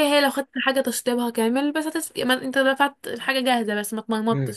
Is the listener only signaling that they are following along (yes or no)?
no